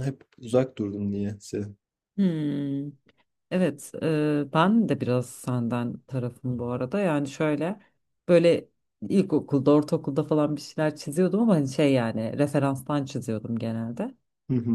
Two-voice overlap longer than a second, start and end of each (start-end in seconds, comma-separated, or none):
none